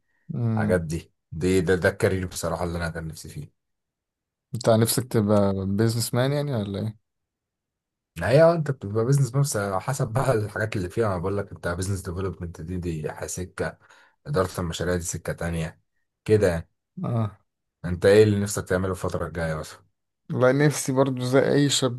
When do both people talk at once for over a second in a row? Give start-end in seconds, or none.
none